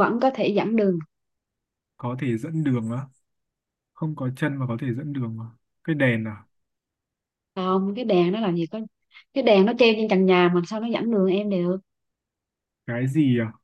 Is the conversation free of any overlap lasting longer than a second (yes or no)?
yes